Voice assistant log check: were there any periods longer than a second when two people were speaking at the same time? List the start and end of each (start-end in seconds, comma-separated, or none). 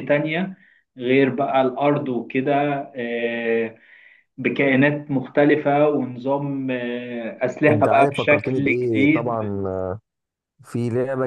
7.7-9.3